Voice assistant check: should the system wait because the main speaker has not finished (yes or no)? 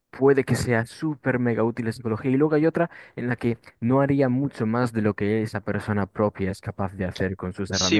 no